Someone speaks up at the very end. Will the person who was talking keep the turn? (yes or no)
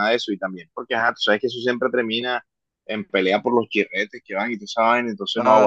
no